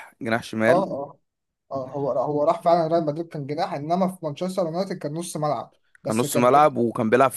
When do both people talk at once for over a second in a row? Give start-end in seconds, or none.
none